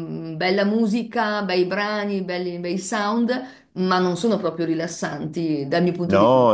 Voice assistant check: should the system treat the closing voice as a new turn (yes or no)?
yes